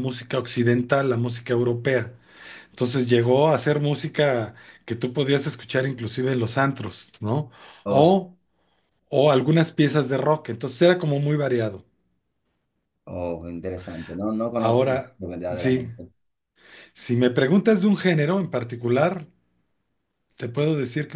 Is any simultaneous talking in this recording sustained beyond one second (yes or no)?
no